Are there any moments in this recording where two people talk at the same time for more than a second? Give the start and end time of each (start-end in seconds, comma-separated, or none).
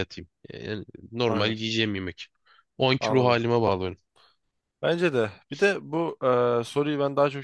none